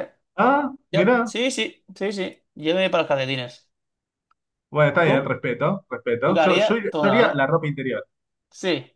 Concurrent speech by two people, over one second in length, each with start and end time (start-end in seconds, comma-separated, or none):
6.2-7.5